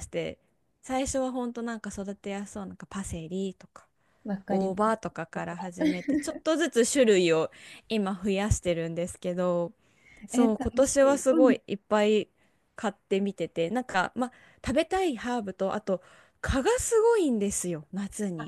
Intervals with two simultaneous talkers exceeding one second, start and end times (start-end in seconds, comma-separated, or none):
10.3-11.6